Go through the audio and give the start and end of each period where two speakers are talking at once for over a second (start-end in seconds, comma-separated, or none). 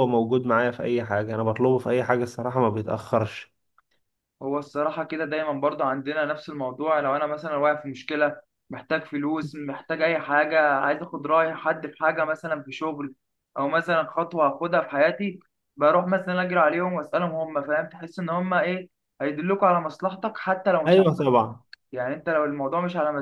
none